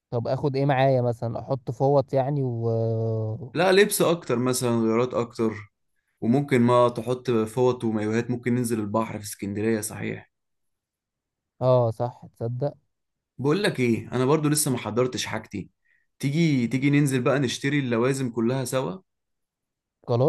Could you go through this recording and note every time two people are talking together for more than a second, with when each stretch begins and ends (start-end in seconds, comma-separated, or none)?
none